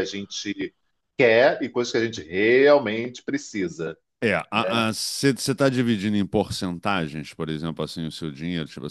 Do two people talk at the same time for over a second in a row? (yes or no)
no